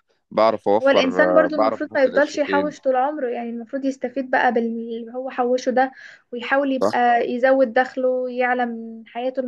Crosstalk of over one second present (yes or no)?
yes